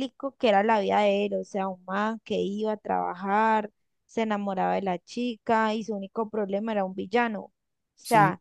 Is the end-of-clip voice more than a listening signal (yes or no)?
no